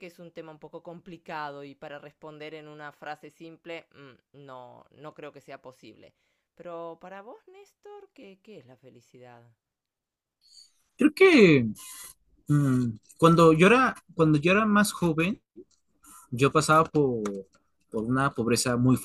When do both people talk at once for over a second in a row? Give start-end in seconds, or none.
none